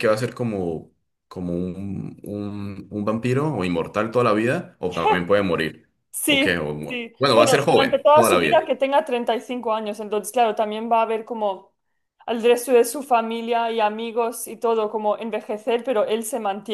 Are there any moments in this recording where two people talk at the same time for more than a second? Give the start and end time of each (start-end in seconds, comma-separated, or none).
6.2-8.6